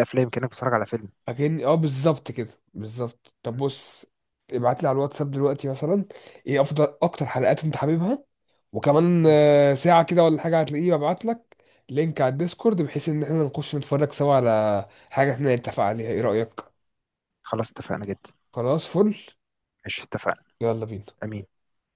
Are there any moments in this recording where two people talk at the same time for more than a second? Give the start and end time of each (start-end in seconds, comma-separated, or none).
none